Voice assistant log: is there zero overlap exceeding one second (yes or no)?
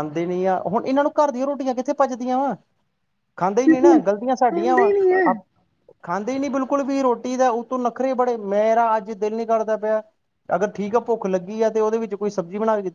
no